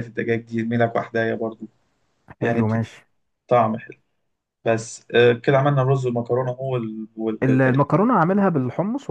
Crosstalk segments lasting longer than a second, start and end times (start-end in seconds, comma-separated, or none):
none